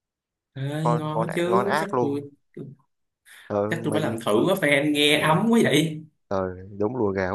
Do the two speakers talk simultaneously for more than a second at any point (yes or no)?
yes